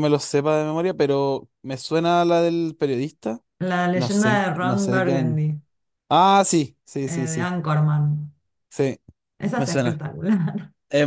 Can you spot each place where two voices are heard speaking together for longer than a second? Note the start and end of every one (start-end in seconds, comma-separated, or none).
3.9-5.4